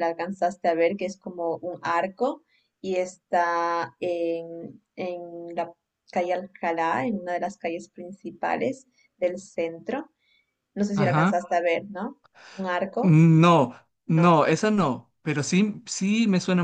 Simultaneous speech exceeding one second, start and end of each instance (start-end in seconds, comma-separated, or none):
none